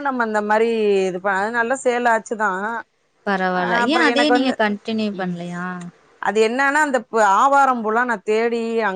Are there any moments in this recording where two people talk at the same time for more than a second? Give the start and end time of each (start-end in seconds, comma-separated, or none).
none